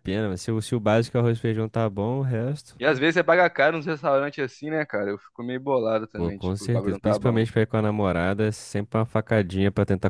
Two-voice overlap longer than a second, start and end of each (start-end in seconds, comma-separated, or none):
6.2-7.5